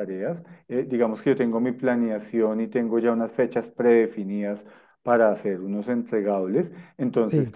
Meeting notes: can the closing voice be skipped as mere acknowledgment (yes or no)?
yes